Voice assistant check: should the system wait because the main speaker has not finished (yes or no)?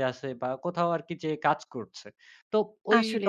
yes